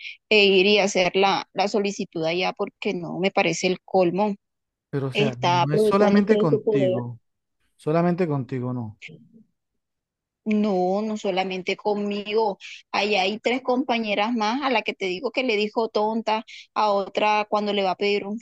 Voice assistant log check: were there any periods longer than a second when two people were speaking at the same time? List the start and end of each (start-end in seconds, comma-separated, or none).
5.1-7.0